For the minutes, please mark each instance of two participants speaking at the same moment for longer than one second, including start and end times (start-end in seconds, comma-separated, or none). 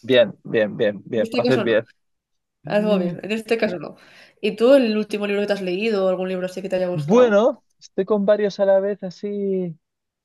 none